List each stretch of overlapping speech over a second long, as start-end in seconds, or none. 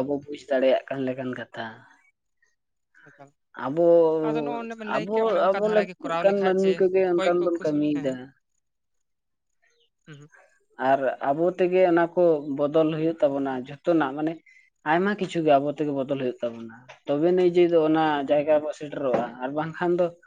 5.0-8.1